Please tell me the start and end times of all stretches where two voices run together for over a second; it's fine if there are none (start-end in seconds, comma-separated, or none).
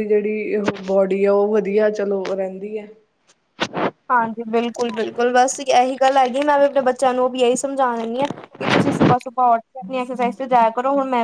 none